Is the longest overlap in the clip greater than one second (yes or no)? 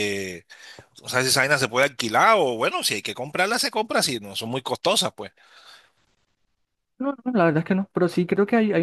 no